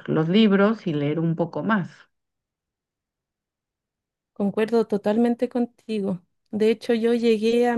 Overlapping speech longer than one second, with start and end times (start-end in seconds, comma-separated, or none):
none